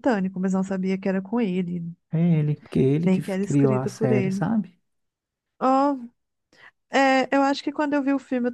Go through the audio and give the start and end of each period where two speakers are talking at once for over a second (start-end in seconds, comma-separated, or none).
3.0-4.4